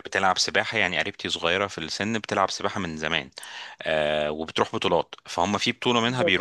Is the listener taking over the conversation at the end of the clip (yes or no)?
no